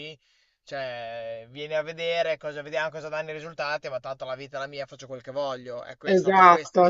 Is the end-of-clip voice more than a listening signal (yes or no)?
yes